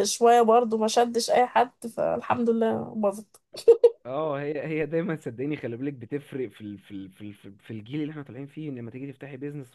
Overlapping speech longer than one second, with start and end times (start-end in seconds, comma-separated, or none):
none